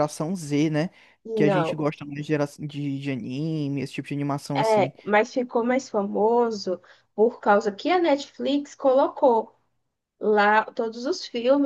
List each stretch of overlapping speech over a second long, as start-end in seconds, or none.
none